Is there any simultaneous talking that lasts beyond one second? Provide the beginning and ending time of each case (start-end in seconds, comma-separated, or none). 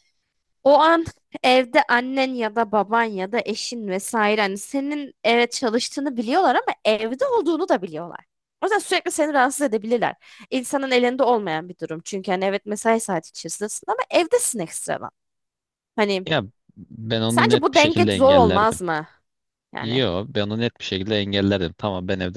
17.3-18.8